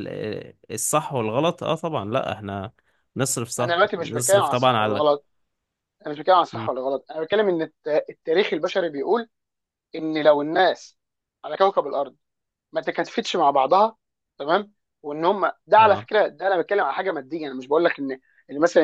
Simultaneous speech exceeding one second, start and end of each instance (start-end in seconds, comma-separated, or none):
3.6-5.0